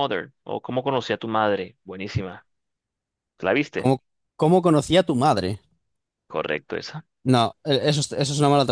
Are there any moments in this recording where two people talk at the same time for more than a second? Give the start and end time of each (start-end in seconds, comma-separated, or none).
none